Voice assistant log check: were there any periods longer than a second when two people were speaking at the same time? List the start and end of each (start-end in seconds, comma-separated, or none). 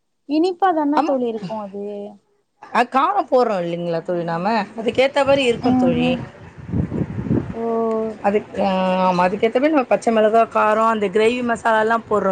none